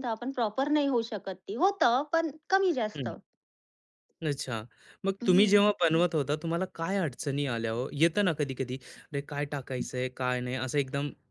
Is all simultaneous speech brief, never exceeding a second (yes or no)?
yes